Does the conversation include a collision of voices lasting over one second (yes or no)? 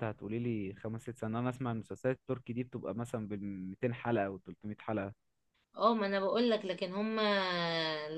no